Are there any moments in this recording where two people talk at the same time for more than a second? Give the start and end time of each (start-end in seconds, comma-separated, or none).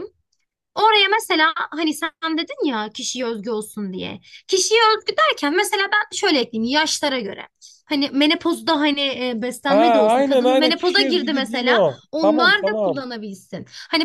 9.6-13.0